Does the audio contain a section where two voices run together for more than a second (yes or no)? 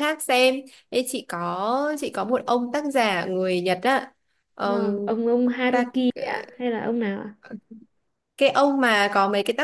no